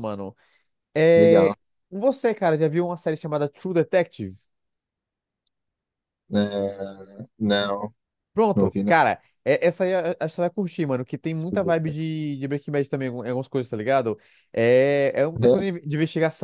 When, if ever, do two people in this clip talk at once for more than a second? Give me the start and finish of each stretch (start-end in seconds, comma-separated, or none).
none